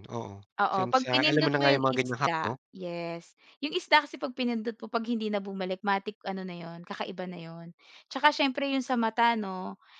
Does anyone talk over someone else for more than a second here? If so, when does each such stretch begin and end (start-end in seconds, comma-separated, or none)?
0.6-2.6